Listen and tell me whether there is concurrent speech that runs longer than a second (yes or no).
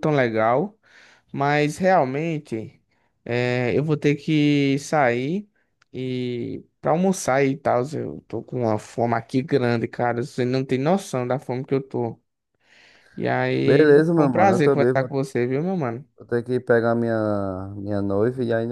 yes